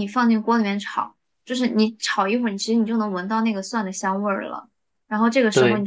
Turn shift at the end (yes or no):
no